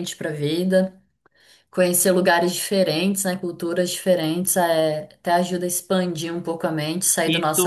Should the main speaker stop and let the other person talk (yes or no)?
yes